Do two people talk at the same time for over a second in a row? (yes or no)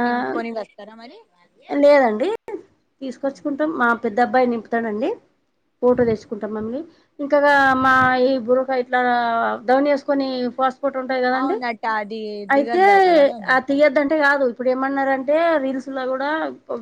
no